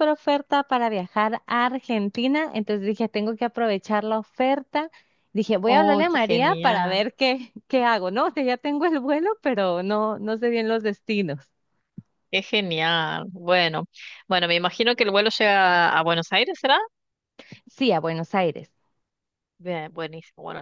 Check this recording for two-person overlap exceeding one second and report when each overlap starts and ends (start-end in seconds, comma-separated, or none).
5.7-7.0